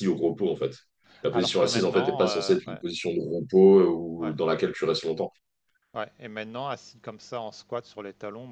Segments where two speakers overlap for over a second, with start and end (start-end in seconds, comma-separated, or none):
1.3-2.8